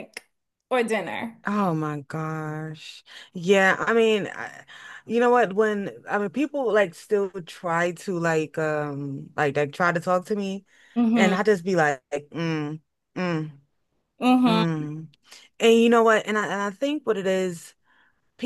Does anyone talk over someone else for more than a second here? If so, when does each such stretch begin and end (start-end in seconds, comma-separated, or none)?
none